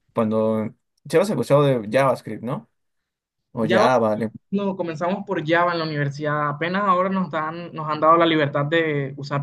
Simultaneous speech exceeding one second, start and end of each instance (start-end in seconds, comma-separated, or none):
none